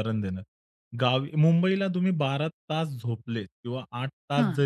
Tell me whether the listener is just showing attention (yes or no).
yes